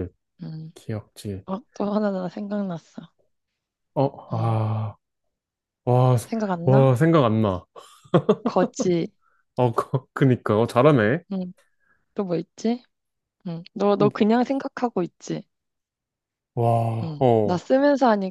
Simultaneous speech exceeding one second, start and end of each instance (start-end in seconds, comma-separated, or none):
none